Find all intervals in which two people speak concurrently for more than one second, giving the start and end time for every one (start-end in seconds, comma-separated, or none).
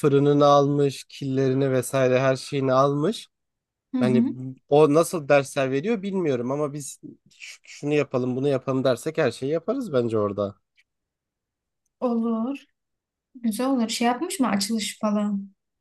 none